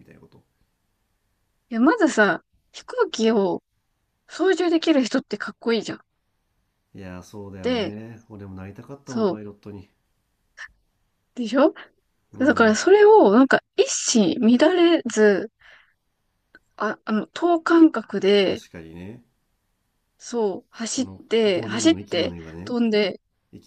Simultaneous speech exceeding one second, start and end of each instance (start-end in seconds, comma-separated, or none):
20.9-22.8